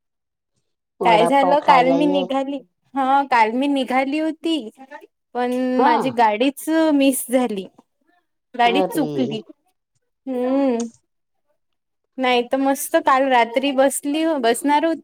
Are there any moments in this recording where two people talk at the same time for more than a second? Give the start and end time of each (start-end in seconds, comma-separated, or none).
1.0-2.2